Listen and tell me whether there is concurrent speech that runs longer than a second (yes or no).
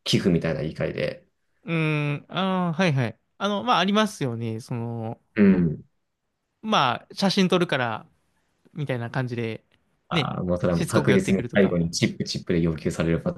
yes